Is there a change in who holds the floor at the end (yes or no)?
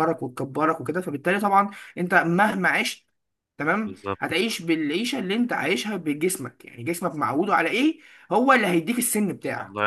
yes